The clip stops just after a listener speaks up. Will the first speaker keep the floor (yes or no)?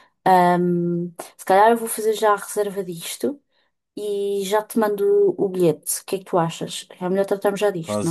no